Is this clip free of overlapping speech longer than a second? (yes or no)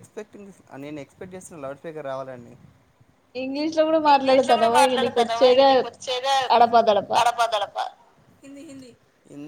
no